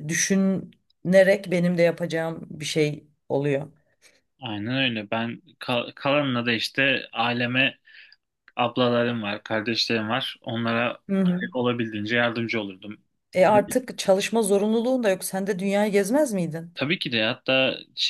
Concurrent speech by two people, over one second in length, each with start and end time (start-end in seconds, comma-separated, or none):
none